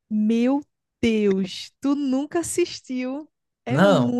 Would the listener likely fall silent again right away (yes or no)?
yes